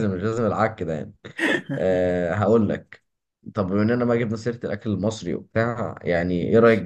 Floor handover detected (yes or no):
no